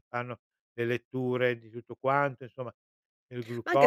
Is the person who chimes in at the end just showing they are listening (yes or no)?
no